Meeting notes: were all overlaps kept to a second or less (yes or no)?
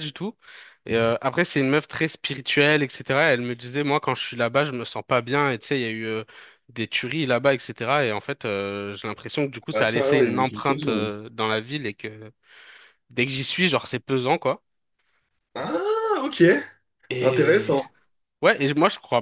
no